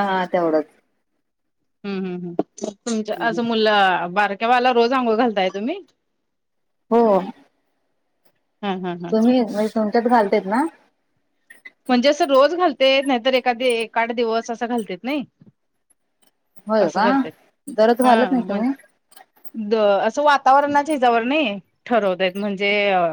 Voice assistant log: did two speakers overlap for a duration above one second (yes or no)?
no